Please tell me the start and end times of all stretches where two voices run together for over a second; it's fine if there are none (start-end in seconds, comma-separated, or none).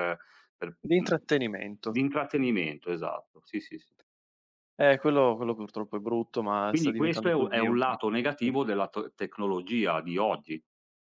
6.7-8.5